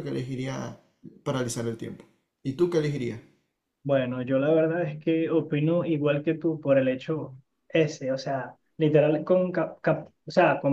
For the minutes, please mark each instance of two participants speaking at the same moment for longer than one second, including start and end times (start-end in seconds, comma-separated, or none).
none